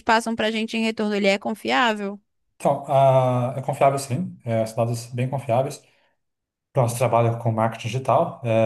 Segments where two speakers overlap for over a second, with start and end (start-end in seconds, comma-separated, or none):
none